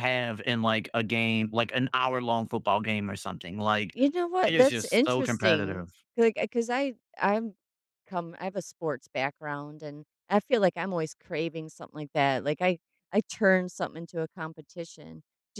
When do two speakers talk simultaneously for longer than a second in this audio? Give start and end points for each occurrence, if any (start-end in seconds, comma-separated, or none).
4.5-5.9